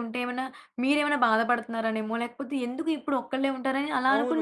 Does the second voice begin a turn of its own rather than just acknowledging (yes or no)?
yes